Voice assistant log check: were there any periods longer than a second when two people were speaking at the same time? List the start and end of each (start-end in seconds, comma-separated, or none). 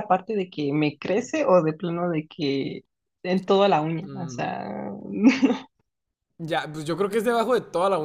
none